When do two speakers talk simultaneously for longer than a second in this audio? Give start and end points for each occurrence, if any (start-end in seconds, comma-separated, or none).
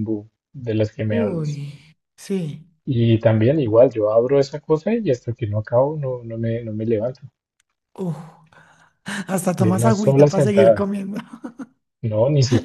9.6-10.9